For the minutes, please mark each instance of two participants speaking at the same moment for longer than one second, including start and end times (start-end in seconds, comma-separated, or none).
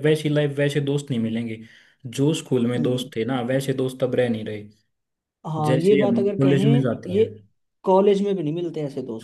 5.7-7.2